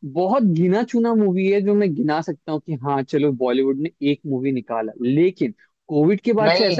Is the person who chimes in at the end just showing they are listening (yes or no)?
yes